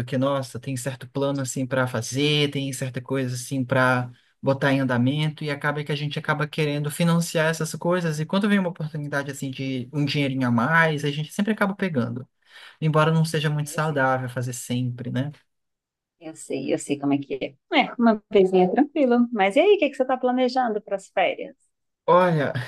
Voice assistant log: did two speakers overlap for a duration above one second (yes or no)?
no